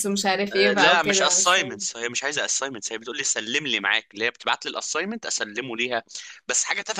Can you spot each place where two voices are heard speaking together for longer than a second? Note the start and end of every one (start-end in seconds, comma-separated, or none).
0.5-1.8